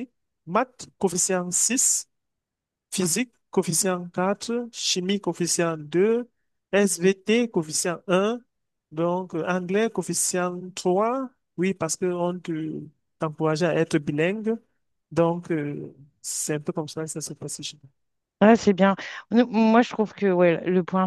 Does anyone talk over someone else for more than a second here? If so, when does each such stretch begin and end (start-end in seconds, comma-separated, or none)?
none